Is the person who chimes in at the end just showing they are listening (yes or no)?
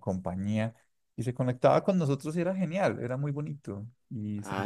no